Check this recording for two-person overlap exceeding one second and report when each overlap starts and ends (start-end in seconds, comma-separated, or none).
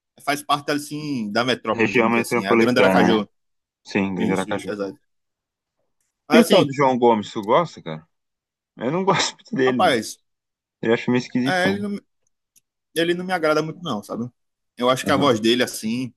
1.7-3.2